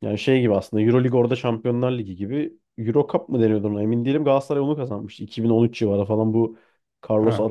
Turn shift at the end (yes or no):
no